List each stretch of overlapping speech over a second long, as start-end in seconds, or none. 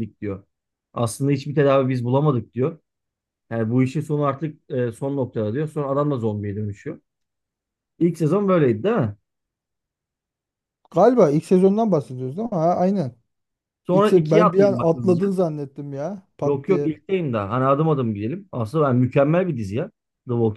13.9-15.3